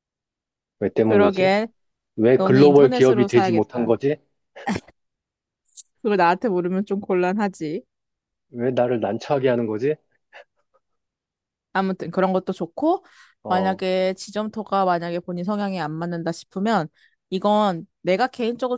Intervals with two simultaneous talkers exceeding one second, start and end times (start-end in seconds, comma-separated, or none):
2.3-3.9